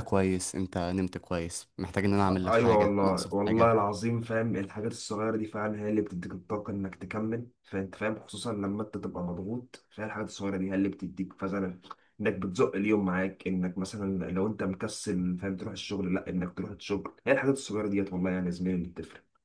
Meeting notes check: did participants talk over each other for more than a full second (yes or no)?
yes